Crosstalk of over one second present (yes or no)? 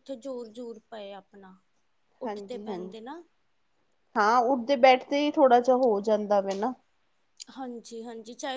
no